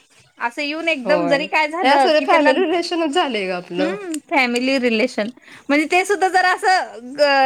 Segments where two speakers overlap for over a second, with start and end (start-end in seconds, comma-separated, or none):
1.0-2.5